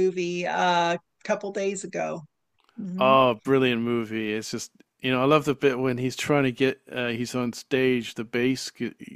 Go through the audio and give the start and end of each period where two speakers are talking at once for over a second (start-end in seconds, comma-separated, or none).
none